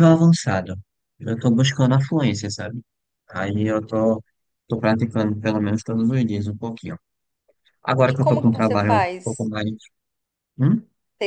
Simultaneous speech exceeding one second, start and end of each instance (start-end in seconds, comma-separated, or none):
8.1-9.5